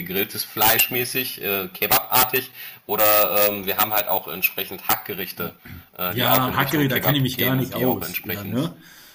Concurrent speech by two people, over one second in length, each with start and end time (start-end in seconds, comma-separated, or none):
6.1-8.6